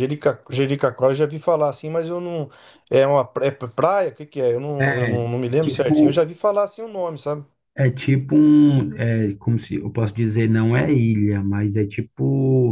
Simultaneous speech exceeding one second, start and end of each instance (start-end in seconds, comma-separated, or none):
4.8-6.2